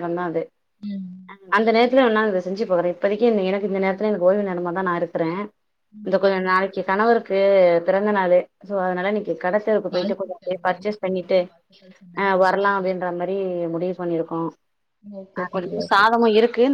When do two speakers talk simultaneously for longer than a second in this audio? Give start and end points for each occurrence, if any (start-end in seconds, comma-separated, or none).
9.9-11.4